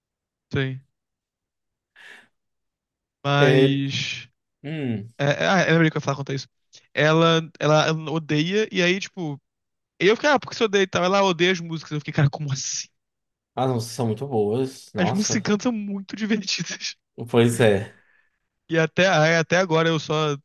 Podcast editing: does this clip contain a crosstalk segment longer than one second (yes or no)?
no